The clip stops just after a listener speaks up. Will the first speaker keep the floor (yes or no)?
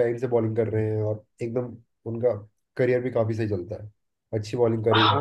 no